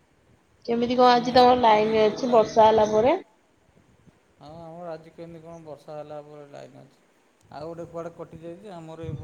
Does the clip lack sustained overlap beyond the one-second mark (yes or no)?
no